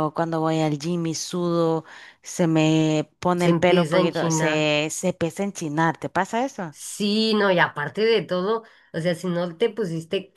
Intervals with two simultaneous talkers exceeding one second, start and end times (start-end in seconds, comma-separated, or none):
3.3-4.7